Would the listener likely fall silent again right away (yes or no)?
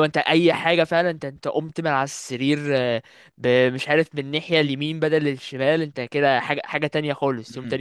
no